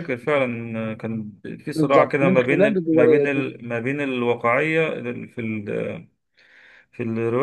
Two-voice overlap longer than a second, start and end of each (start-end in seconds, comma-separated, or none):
1.7-3.5